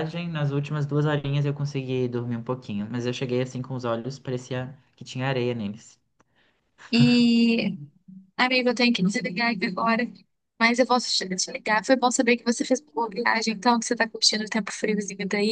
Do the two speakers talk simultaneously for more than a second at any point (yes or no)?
no